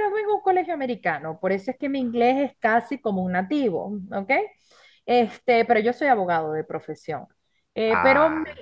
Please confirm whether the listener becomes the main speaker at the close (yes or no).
no